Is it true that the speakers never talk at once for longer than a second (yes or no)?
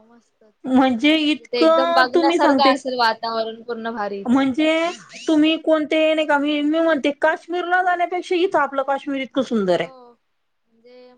no